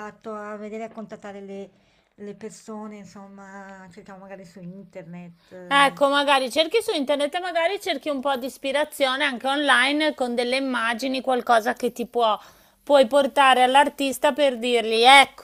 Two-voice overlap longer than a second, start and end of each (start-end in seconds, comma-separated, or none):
none